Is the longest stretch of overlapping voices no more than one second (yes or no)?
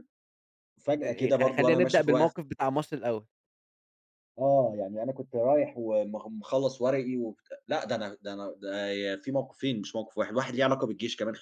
no